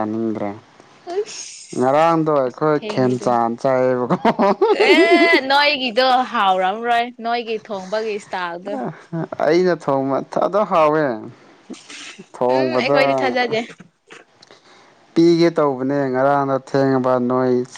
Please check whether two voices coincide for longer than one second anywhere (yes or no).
yes